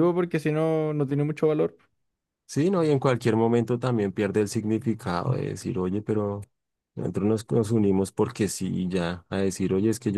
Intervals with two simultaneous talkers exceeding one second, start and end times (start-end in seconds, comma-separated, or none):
none